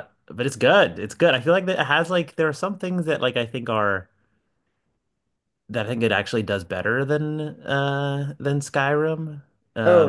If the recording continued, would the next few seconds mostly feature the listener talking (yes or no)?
yes